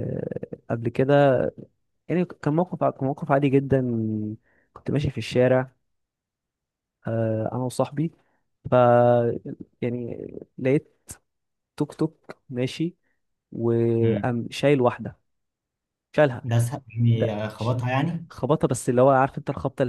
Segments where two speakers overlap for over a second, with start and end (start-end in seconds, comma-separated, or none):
none